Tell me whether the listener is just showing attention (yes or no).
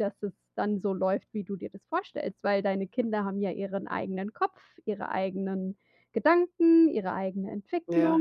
no